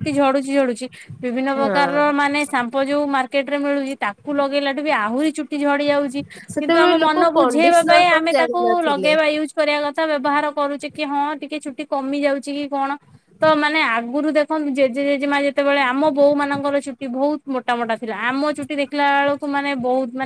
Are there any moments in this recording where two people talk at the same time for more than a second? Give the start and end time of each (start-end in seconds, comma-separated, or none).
6.6-9.1